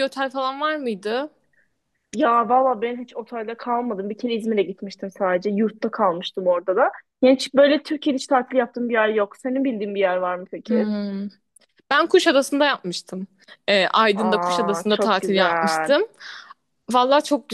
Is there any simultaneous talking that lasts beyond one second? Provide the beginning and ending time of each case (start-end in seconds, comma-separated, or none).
14.2-15.9